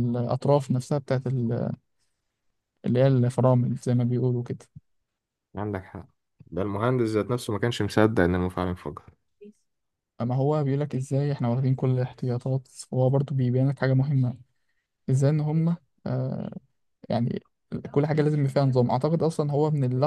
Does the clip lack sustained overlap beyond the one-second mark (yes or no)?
yes